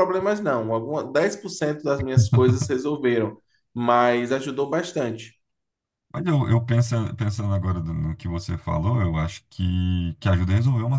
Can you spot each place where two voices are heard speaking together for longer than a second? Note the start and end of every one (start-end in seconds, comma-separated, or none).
none